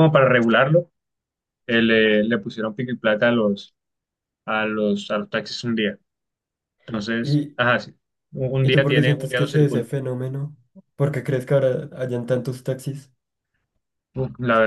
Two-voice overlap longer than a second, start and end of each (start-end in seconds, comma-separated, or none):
8.6-9.9